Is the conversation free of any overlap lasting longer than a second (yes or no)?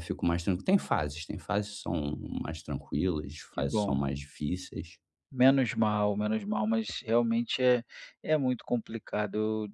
yes